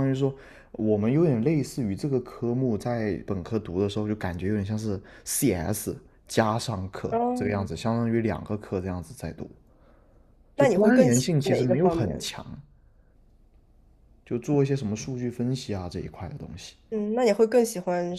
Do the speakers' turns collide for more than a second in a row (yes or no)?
yes